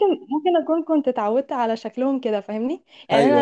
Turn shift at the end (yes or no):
no